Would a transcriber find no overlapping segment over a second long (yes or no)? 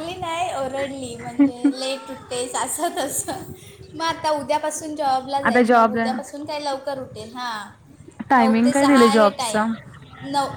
no